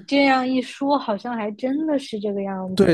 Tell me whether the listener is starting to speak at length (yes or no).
yes